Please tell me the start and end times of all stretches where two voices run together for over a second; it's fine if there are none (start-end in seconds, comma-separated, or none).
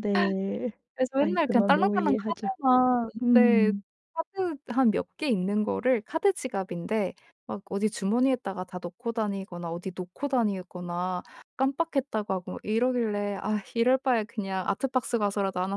1.2-2.5